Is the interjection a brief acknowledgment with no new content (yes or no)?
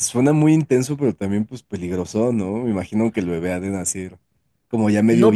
no